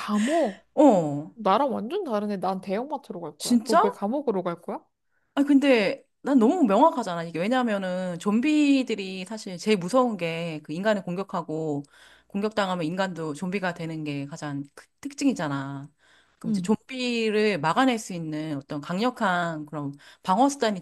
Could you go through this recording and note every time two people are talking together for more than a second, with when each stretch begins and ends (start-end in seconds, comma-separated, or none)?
none